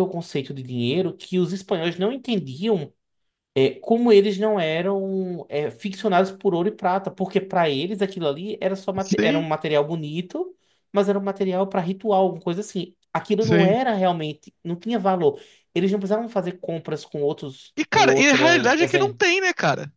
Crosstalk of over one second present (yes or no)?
yes